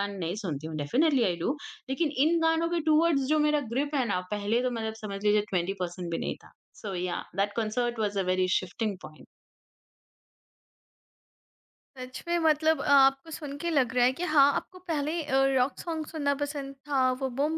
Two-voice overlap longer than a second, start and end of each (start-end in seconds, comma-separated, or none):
none